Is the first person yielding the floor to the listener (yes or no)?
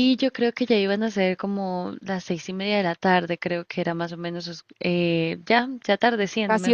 yes